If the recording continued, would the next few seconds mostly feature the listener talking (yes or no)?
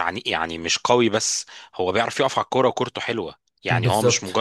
no